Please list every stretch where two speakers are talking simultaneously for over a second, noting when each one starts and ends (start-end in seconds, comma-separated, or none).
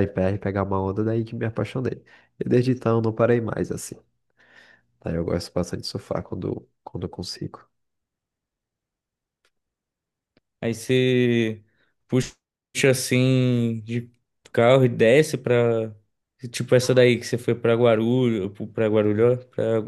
none